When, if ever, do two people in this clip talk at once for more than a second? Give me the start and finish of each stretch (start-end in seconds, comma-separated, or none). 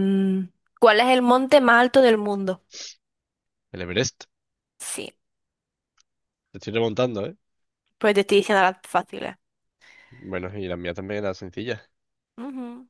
none